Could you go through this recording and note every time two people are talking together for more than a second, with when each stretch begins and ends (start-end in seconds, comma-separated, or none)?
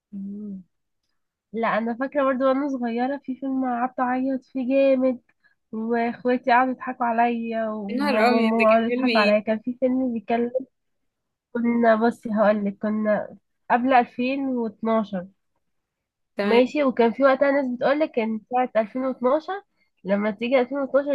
7.9-9.4